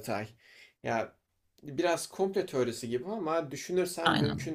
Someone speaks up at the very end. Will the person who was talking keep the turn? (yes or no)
yes